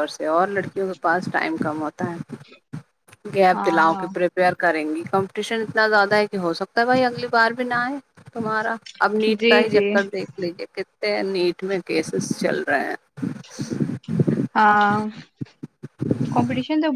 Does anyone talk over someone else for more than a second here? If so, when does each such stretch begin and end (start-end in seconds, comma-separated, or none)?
none